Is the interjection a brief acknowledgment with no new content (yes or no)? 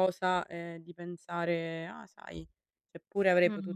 yes